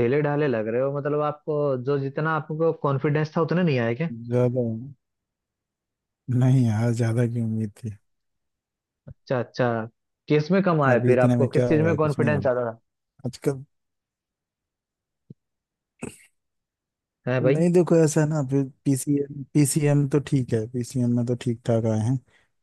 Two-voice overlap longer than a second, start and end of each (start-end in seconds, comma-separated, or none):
10.9-12.5